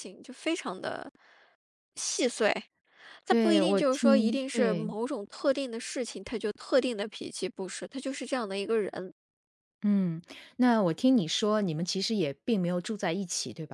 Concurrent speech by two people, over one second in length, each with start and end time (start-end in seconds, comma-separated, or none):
3.3-4.9